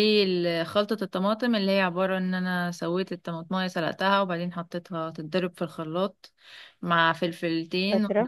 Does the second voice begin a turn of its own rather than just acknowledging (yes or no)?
no